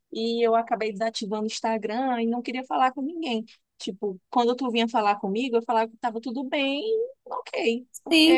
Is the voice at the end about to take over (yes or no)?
yes